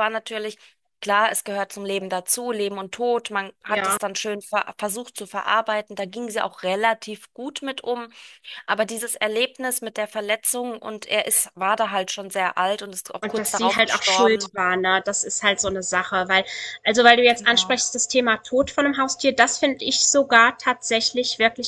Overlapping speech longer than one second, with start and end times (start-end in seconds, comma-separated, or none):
13.2-14.5